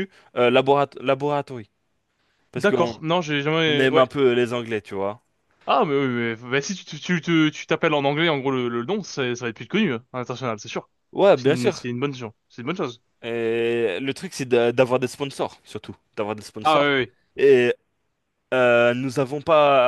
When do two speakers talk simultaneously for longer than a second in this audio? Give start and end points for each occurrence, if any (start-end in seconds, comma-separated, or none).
none